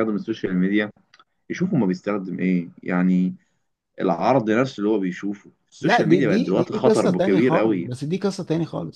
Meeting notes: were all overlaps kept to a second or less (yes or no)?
no